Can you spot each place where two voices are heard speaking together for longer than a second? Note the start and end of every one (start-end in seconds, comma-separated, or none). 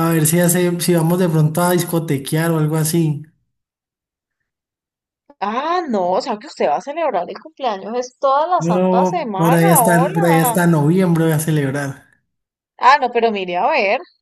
8.6-10.6